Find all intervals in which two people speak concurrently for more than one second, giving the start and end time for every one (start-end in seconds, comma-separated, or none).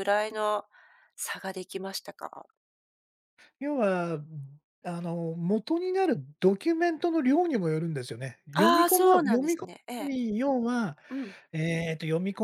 8.6-10.1